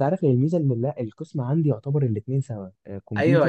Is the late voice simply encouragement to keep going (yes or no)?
no